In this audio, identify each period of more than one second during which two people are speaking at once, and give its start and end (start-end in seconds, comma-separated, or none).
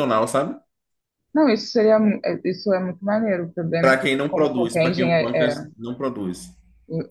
3.8-5.5